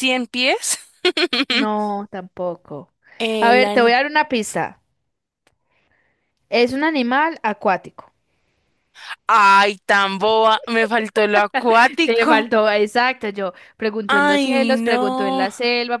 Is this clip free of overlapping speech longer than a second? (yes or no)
no